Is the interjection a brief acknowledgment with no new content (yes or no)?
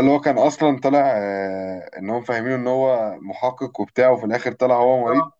no